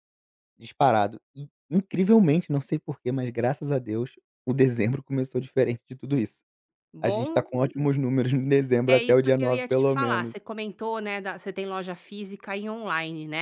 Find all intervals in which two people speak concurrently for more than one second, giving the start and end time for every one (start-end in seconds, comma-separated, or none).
8.9-10.4